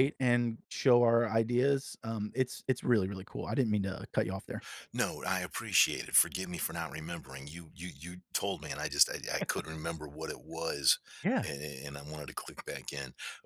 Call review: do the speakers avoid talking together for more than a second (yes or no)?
yes